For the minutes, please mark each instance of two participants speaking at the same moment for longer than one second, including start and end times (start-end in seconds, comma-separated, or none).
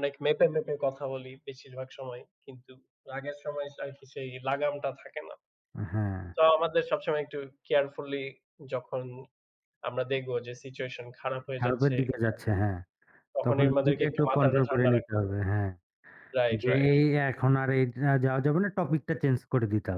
13.4-15.3